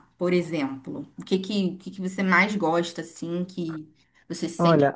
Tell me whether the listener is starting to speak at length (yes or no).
yes